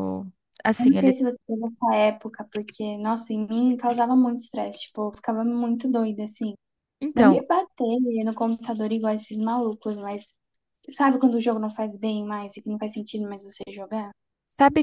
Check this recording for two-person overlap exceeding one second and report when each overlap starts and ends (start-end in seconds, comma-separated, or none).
none